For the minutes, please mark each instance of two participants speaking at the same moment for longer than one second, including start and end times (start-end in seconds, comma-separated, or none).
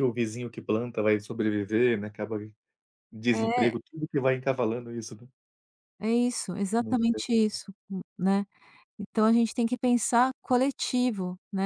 none